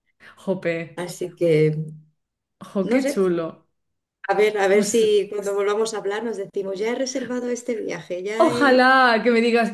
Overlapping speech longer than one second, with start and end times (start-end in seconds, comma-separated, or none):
none